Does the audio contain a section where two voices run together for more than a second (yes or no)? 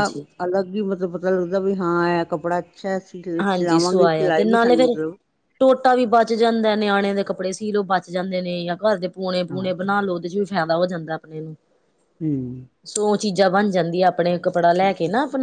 yes